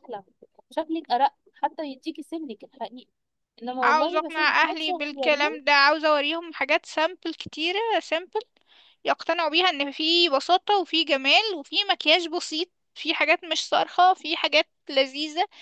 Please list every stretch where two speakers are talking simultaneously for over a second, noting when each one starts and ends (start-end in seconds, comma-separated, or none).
3.8-5.6